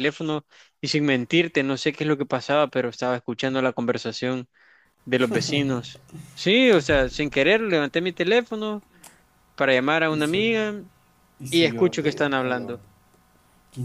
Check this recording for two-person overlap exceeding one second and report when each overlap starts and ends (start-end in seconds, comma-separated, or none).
11.5-12.8